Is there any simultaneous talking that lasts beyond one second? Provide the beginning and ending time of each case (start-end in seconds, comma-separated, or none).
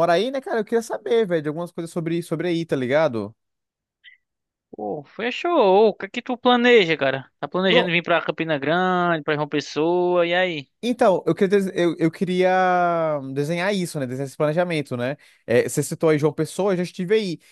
none